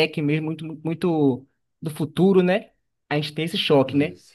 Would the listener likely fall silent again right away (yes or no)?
yes